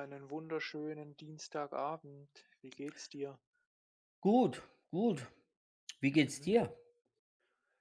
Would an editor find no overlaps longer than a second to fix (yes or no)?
yes